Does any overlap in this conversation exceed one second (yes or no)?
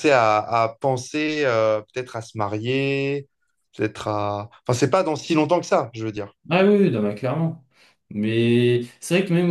no